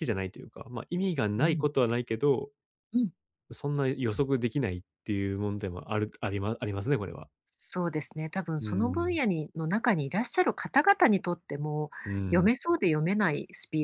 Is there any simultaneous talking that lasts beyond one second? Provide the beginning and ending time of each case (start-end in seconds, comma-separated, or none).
none